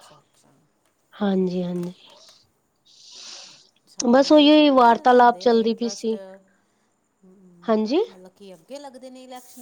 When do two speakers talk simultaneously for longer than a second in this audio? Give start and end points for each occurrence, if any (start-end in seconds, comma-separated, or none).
4.1-6.1